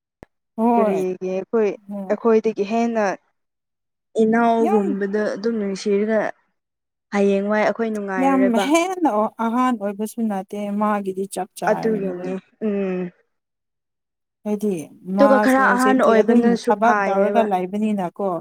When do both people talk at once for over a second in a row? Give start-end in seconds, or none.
15.2-17.5